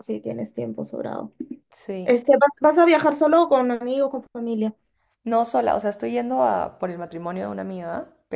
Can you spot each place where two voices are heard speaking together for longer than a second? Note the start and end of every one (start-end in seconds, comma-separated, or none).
none